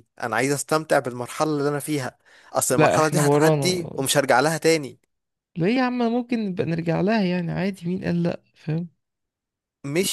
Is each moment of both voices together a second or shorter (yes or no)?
no